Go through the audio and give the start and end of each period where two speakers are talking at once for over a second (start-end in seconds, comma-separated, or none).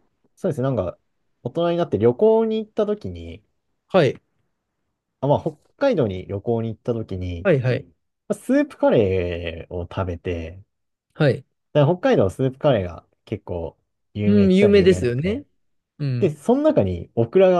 14.2-15.4